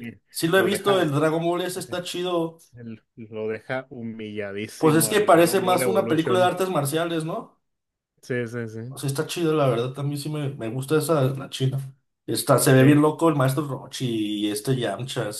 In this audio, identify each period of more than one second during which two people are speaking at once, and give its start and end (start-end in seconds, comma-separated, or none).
4.8-6.5